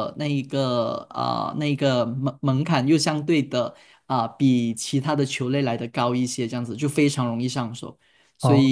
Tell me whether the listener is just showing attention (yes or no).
yes